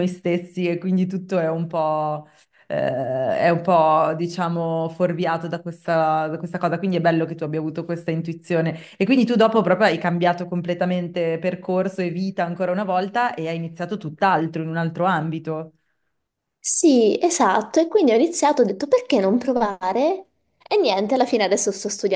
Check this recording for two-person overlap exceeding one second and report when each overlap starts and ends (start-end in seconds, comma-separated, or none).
none